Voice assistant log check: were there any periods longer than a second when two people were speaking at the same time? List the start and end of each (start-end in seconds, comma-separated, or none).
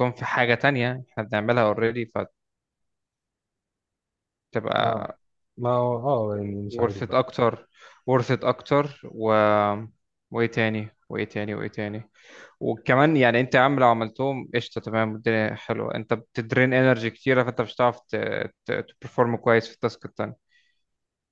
none